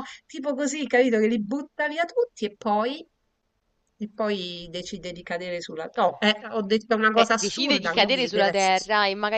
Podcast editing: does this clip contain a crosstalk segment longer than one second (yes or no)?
yes